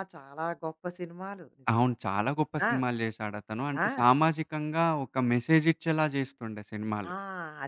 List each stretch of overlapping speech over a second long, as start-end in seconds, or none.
none